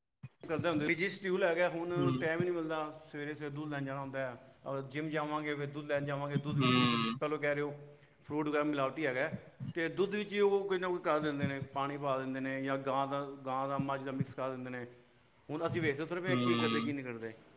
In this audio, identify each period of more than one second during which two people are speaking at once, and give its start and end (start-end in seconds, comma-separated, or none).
none